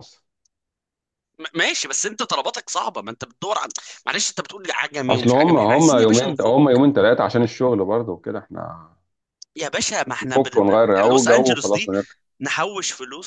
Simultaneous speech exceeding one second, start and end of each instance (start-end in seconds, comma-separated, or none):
5.1-6.6, 10.2-11.9